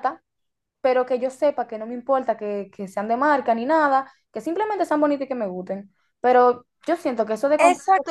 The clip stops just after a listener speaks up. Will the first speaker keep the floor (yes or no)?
no